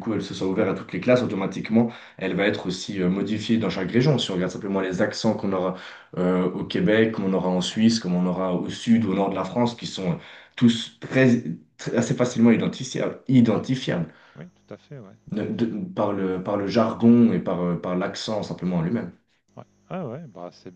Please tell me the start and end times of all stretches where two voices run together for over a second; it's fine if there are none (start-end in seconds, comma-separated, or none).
none